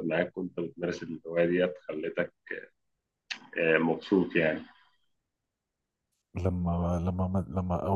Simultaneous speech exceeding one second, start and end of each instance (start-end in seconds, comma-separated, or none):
none